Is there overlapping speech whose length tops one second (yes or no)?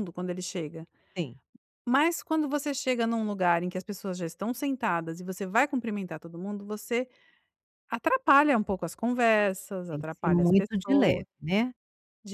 yes